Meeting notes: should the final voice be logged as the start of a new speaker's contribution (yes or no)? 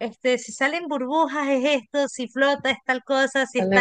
no